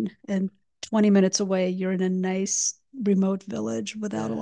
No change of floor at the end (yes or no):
no